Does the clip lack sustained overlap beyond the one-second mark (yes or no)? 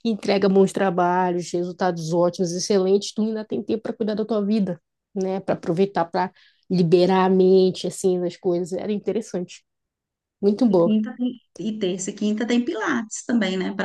yes